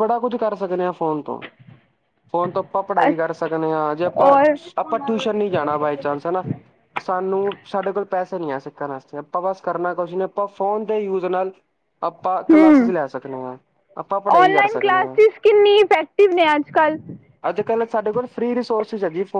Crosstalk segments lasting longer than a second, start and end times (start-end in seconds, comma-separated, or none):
none